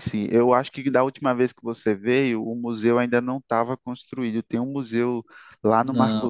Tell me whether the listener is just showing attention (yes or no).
yes